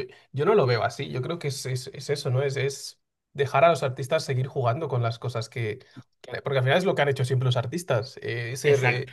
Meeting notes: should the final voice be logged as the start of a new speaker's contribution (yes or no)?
no